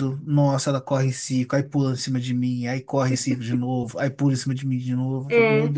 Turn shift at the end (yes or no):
no